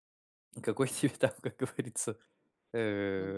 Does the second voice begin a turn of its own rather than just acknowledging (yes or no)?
yes